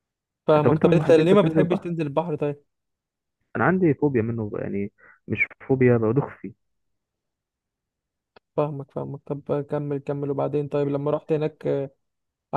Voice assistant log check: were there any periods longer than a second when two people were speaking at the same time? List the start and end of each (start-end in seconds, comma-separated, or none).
0.6-1.9